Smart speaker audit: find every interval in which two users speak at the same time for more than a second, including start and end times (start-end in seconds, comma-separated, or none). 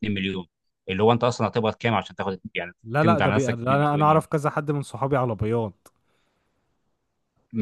2.8-4.2